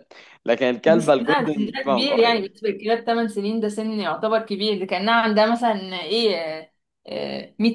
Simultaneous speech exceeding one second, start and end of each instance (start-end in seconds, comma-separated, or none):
0.9-2.4